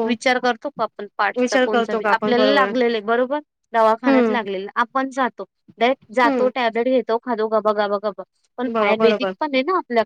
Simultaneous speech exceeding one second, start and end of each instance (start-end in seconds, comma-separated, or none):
1.4-2.7